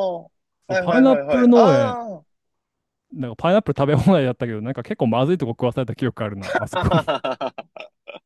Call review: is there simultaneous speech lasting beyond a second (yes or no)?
yes